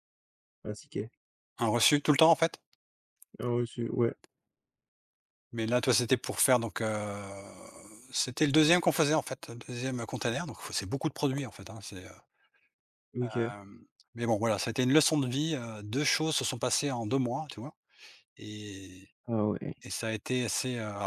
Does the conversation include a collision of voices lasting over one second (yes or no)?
no